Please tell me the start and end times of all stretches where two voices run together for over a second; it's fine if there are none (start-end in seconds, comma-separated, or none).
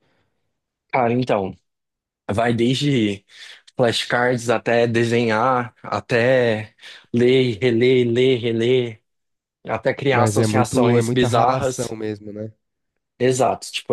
10.1-11.9